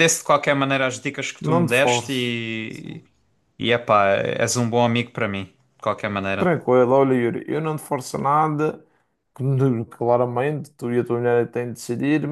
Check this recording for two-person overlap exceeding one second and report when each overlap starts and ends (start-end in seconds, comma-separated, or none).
1.4-3.0